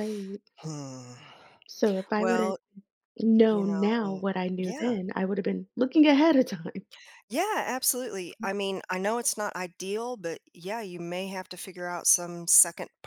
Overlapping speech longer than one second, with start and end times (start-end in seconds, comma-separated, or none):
3.4-5.0